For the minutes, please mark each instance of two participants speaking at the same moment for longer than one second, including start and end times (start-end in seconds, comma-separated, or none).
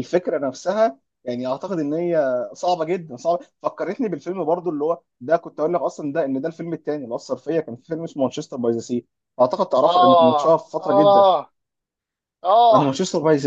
9.8-11.3